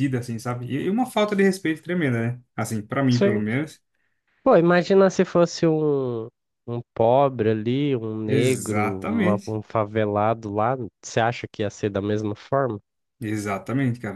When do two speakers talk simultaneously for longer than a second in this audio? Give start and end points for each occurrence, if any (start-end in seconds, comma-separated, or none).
8.2-9.6